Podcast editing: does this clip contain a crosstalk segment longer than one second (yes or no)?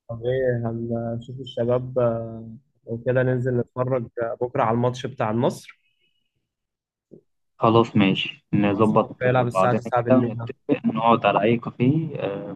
yes